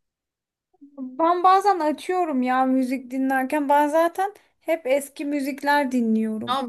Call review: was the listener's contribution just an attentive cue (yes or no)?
no